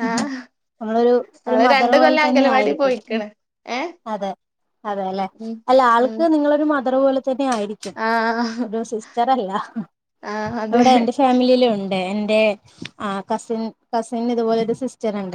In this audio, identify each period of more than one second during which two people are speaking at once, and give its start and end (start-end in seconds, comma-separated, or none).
1.5-3.2